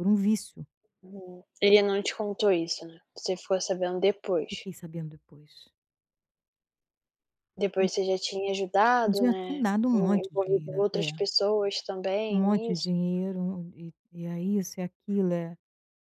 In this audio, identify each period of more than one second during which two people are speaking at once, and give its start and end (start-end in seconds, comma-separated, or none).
9.0-11.1